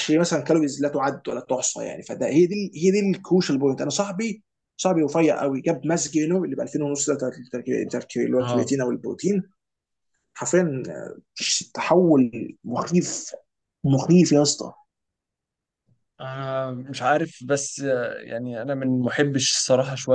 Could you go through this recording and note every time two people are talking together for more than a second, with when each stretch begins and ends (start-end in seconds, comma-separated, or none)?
none